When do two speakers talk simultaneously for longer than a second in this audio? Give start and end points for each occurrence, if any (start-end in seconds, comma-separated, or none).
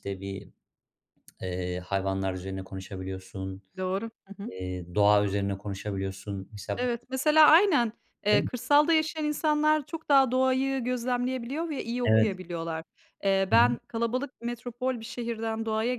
none